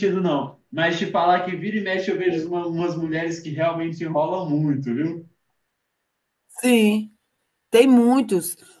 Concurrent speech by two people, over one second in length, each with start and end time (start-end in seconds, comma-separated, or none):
none